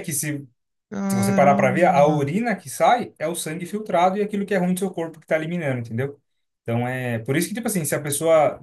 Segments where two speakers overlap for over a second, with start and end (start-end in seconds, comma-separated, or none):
1.1-2.4